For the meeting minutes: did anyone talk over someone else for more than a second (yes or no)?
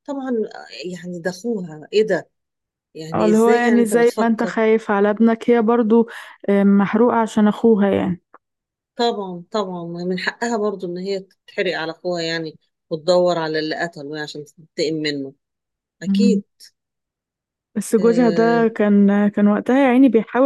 yes